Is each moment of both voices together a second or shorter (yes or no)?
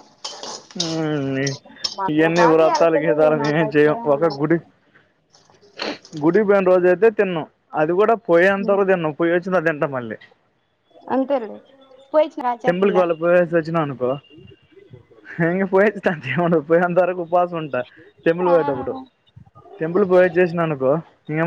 no